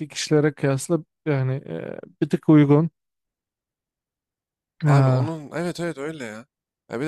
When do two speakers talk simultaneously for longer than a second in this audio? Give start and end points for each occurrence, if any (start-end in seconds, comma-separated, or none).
none